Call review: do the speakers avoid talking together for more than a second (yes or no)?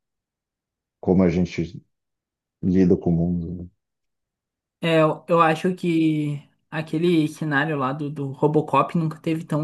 yes